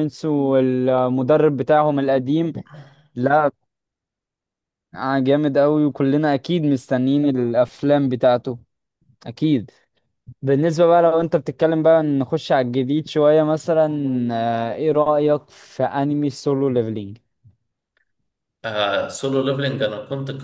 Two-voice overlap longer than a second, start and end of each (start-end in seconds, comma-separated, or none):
none